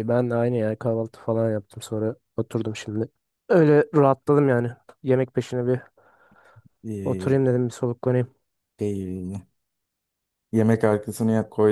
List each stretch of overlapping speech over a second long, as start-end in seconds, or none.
none